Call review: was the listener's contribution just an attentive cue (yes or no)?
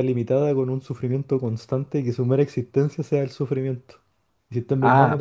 yes